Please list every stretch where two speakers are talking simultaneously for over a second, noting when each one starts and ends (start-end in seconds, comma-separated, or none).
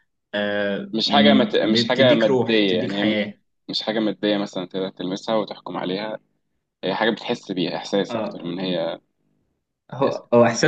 0.9-3.2